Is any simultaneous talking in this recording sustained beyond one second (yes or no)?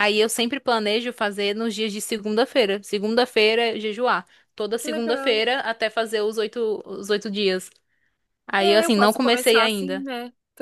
yes